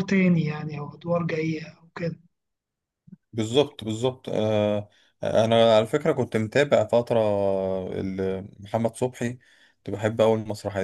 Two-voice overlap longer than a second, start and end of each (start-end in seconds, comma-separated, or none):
none